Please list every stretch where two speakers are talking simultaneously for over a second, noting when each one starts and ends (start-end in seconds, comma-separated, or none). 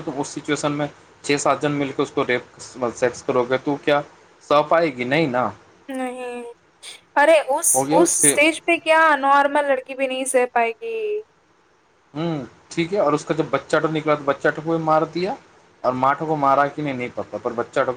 none